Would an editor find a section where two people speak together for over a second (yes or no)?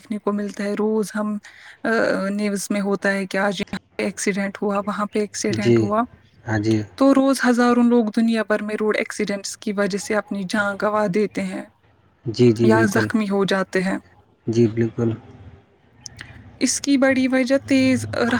no